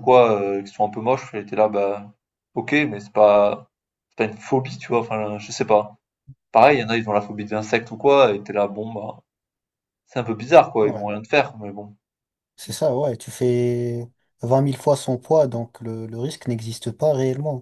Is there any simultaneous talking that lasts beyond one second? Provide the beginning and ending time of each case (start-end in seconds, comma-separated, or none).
none